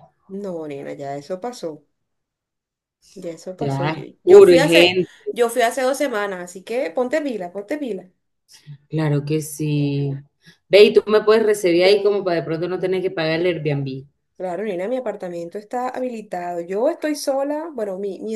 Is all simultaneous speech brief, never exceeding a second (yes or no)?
no